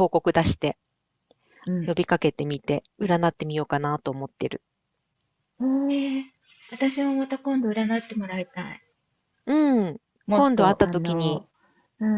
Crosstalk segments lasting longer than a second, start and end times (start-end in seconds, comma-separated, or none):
10.3-11.5